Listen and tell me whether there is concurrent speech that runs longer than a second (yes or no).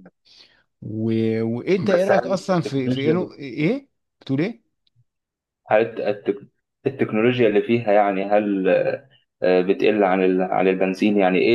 yes